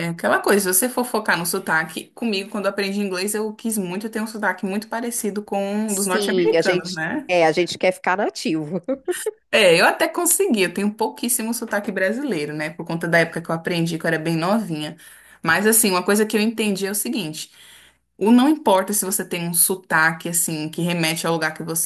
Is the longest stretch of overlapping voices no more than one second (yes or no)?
no